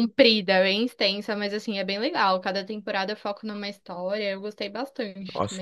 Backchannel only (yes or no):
no